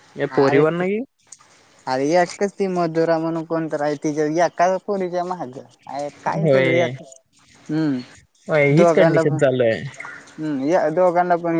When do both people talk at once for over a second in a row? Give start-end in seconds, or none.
8.5-9.8